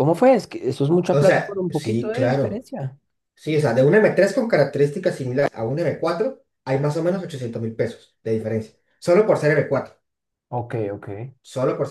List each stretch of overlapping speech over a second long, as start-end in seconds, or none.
1.1-2.6